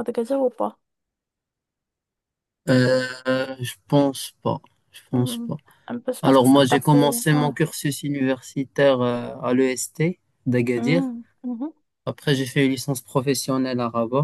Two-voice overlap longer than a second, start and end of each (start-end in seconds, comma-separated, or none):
6.2-7.6